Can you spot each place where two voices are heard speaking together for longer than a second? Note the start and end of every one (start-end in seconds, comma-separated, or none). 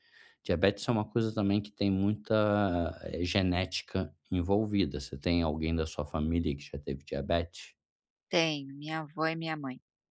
none